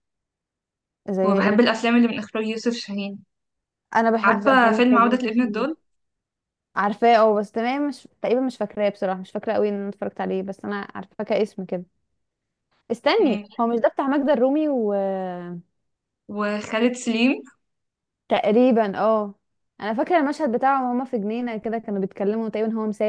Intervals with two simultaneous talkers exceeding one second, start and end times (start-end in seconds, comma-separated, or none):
4.2-5.7